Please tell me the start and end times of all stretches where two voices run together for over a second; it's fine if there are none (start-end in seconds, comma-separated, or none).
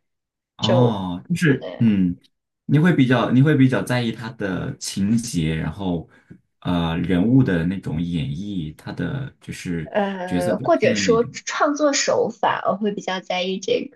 9.8-11.3